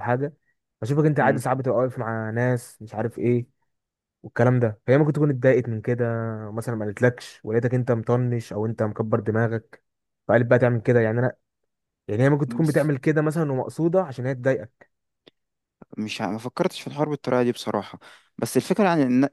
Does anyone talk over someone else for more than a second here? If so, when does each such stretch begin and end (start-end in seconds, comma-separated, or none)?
none